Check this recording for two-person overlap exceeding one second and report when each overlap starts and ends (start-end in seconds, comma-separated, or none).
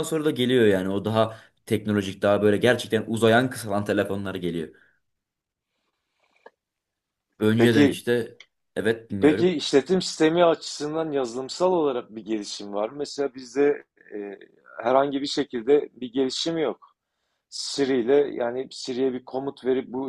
none